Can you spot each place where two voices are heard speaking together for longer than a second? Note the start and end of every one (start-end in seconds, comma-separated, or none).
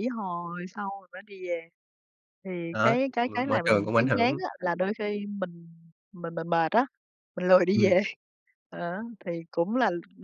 2.7-4.4